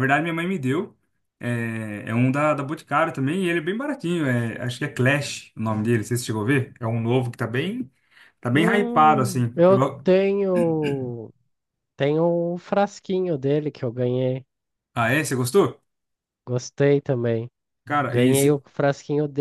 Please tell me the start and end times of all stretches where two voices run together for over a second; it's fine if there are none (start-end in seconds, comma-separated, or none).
8.5-10.1